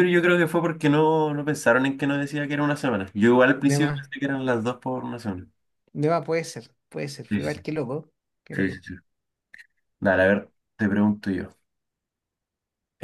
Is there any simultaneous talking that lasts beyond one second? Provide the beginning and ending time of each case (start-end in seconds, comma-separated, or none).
none